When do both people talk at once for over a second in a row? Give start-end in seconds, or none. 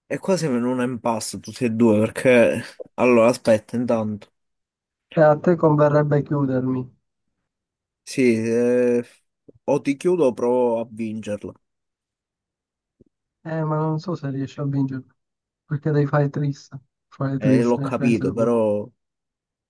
17.4-18.6